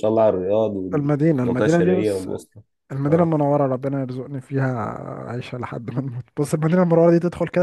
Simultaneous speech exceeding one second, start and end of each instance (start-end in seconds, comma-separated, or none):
0.9-2.3